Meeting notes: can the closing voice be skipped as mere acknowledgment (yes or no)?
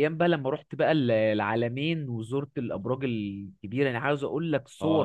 no